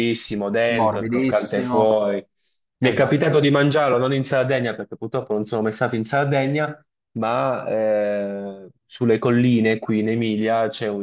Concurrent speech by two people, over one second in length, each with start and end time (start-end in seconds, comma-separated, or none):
0.7-1.9